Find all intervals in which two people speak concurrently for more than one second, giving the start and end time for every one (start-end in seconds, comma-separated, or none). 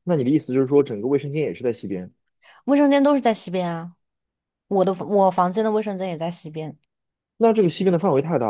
none